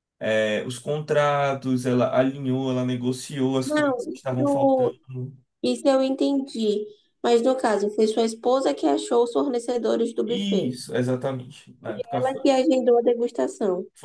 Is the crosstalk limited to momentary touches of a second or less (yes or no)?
no